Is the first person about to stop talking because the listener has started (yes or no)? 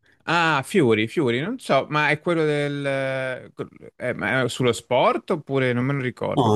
yes